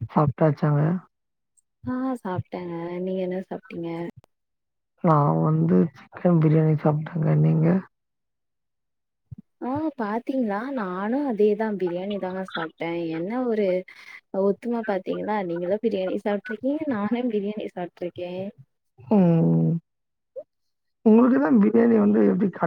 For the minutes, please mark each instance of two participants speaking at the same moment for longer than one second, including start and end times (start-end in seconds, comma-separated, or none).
none